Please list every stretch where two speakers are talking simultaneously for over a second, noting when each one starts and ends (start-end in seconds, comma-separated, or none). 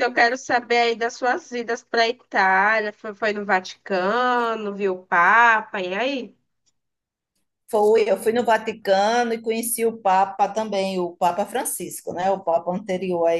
none